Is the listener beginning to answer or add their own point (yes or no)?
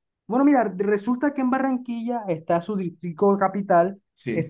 no